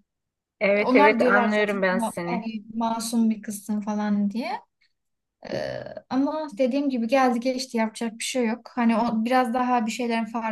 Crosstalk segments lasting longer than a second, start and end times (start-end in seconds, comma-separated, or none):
0.8-2.5